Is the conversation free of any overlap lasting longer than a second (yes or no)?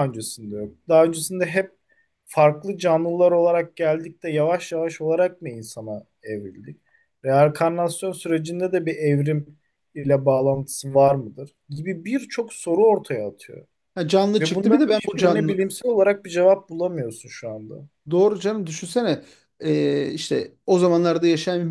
no